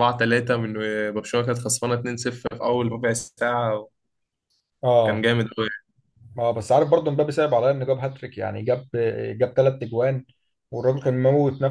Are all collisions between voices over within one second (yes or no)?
yes